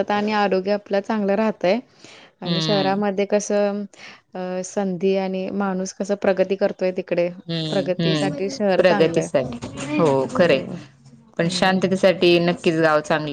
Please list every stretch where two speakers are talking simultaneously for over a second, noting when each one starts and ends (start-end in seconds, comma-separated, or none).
7.7-9.3